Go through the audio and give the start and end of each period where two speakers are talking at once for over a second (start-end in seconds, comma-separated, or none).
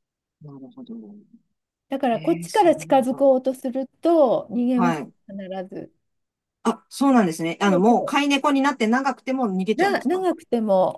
2.1-3.3